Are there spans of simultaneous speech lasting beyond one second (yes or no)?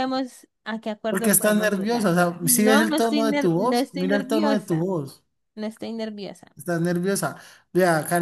yes